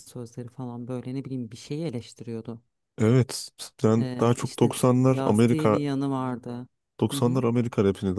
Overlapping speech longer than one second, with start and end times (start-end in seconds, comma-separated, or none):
4.0-5.8